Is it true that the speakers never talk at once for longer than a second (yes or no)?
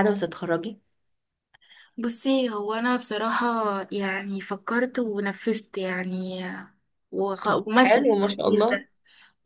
no